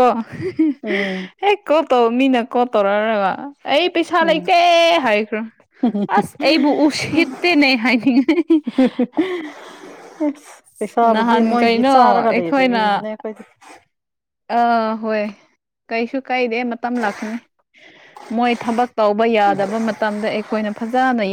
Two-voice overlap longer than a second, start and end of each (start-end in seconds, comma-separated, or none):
11.0-12.8